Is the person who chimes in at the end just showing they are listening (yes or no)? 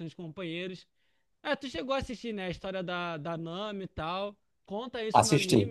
yes